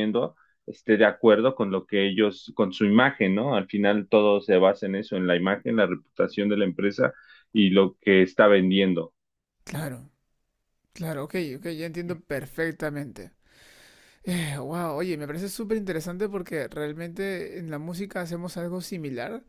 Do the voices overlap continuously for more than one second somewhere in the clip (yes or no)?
no